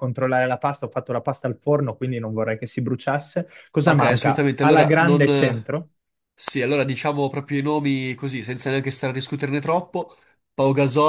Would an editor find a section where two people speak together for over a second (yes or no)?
yes